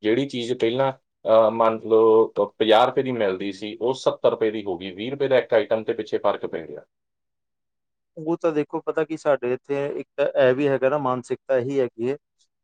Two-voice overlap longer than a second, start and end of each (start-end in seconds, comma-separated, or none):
none